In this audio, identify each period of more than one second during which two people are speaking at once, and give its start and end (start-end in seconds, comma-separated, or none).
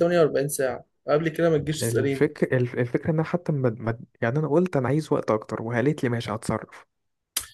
none